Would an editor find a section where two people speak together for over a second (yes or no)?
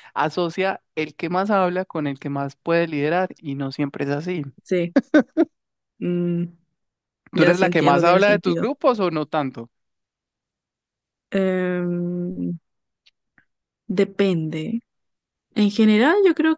yes